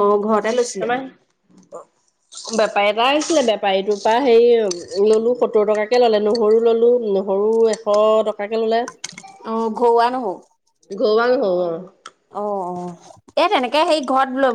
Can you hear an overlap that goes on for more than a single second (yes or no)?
no